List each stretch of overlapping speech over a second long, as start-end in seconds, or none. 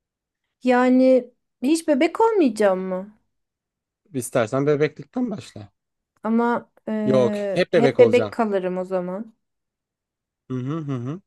7.0-8.4